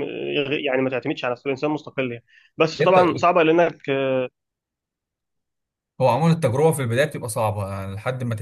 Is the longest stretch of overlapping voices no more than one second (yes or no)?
yes